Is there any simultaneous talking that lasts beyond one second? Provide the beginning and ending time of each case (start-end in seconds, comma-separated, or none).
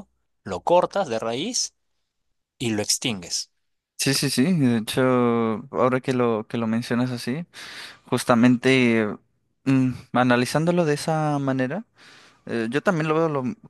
none